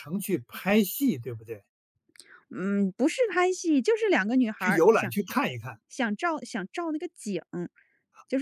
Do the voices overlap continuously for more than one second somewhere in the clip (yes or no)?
no